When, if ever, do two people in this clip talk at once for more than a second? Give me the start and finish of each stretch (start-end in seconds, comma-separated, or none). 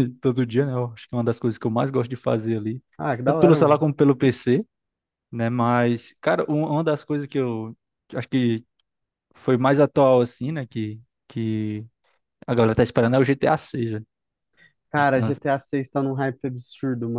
none